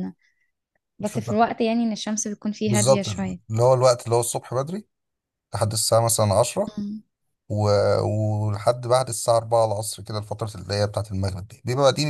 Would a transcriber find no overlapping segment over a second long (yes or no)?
yes